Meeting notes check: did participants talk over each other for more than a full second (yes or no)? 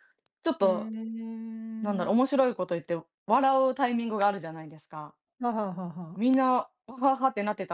no